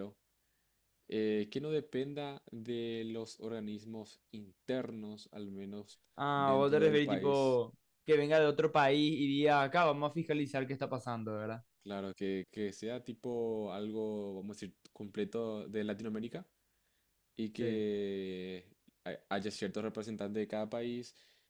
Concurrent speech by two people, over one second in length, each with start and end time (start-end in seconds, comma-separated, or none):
6.4-7.6